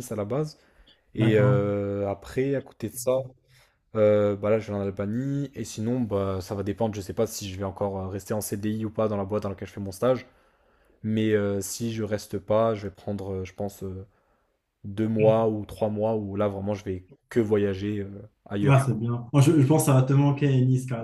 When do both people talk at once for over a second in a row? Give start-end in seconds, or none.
none